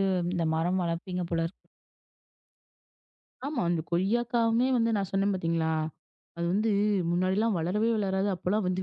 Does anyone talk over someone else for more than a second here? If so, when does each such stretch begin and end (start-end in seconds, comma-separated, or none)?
none